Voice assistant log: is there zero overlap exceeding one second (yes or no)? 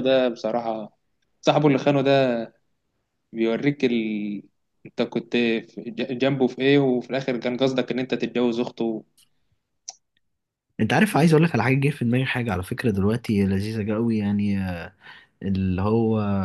yes